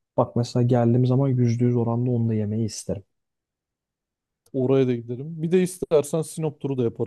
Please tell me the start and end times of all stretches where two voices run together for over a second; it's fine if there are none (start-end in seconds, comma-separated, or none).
none